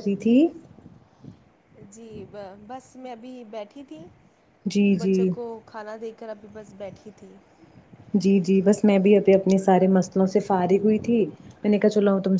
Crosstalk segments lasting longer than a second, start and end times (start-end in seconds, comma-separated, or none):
none